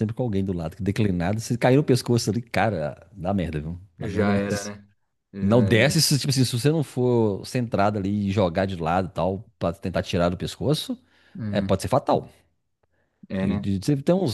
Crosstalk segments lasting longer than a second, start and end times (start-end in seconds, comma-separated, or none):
none